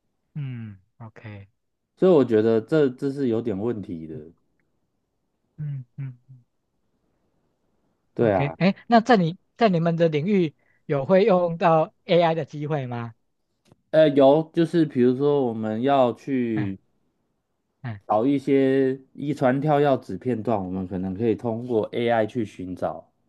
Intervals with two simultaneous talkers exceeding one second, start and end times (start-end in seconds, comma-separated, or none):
none